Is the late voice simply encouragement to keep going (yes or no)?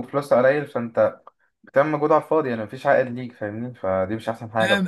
no